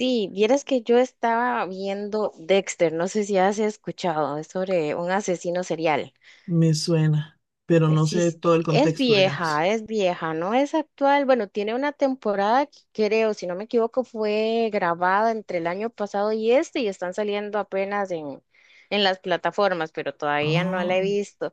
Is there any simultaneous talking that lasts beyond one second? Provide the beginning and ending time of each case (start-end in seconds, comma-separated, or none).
7.9-9.7